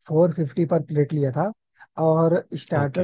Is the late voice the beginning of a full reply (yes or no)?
no